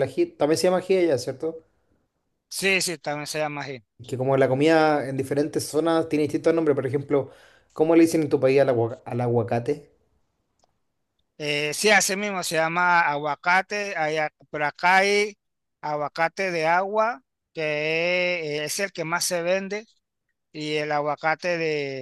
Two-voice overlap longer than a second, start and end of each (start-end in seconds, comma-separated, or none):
none